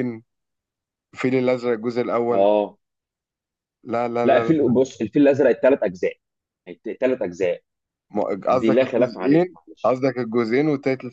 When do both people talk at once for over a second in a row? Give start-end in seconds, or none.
8.5-10.0